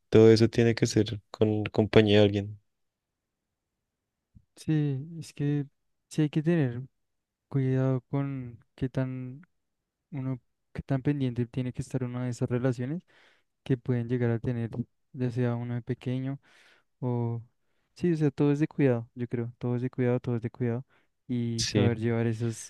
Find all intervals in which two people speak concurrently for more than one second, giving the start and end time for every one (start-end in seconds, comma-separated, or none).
none